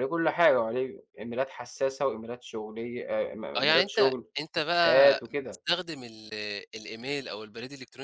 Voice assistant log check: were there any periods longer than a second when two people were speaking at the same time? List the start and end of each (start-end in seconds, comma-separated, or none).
3.6-5.6